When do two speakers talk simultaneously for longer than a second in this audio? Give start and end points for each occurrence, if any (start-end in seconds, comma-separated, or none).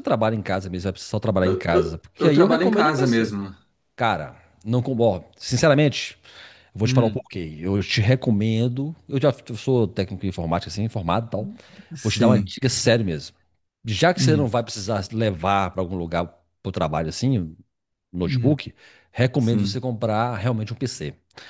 1.4-3.3